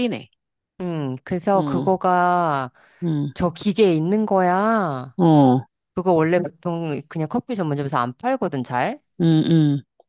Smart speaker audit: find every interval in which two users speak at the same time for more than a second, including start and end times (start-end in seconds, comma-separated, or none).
none